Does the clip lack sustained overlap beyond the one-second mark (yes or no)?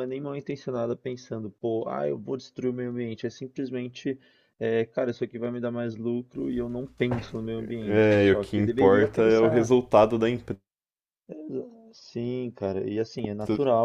no